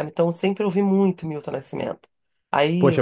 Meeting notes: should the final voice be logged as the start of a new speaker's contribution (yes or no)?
yes